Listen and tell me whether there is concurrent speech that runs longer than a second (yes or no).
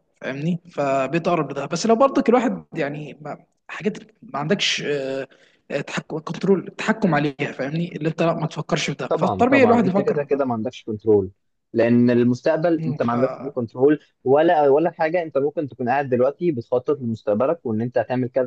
yes